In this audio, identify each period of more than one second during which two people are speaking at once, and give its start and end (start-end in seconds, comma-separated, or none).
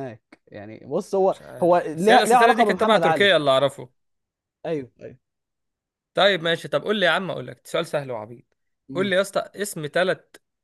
1.3-3.3